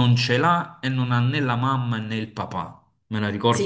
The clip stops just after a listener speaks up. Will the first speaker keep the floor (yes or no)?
no